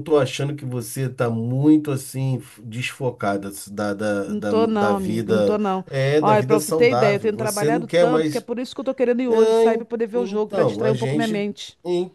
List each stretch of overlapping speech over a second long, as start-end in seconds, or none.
4.2-8.5, 9.3-11.4